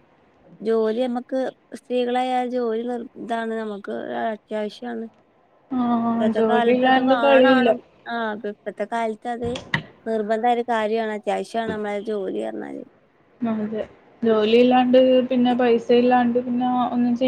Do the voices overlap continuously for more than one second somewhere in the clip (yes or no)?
yes